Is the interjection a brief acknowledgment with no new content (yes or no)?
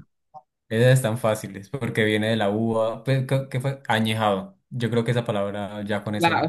no